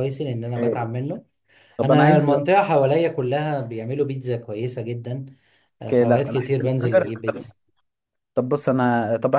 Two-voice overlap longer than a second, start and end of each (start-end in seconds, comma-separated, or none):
5.8-7.5